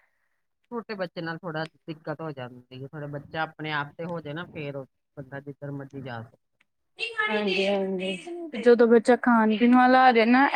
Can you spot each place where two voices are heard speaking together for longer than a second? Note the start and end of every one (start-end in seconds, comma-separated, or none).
none